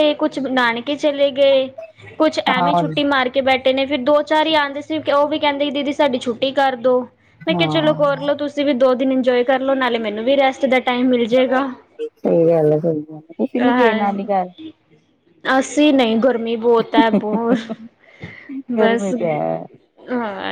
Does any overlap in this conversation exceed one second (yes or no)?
no